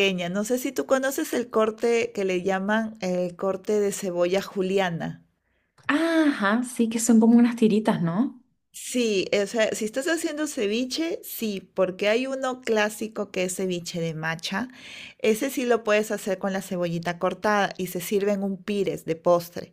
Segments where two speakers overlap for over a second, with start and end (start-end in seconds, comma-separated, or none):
none